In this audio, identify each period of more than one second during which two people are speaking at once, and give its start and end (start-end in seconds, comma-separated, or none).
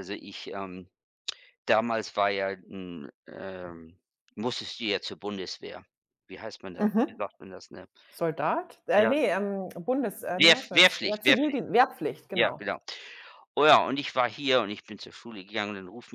10.2-11.6